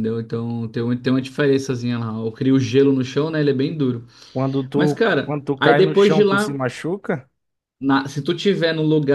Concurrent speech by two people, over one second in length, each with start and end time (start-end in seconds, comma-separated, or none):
4.7-6.6